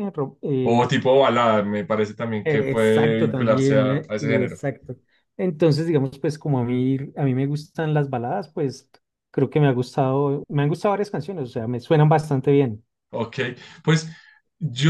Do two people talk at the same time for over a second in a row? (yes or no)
yes